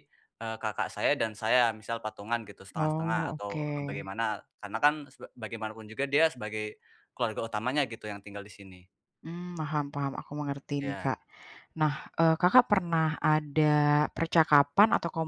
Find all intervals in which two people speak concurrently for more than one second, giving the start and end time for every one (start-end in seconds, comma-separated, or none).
2.8-4.1